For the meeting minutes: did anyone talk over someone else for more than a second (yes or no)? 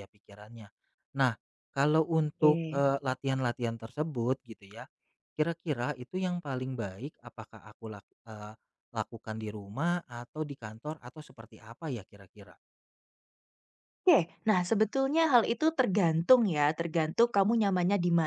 no